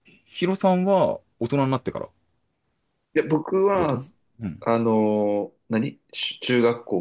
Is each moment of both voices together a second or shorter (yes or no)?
yes